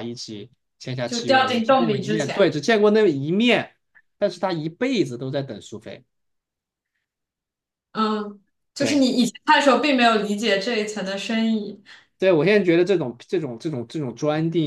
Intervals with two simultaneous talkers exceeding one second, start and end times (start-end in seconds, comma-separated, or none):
1.1-2.5